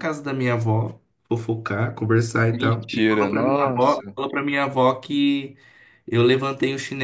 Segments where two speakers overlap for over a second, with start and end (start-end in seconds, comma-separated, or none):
2.5-4.1